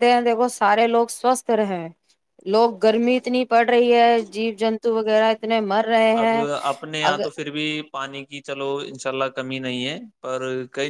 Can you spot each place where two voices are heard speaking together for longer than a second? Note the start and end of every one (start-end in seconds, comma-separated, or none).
none